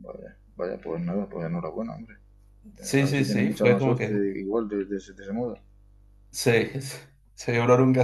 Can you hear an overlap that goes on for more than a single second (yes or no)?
yes